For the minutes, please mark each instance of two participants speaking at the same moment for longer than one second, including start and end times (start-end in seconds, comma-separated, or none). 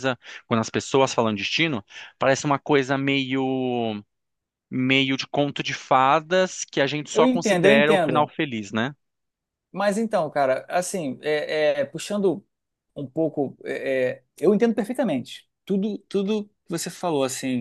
7.1-8.3